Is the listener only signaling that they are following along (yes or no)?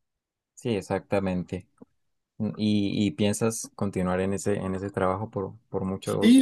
no